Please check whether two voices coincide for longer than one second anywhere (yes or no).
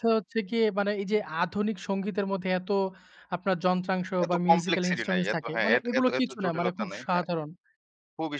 yes